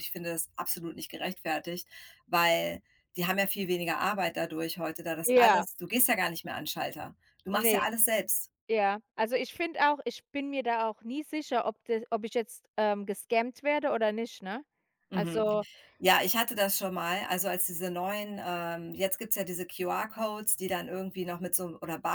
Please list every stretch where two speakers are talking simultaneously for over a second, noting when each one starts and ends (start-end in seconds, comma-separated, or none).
none